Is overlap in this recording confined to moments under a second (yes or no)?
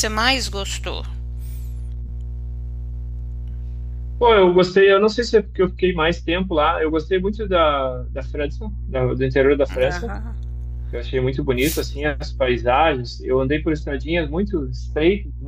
yes